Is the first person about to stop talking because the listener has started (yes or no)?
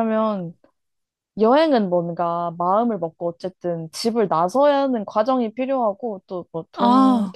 no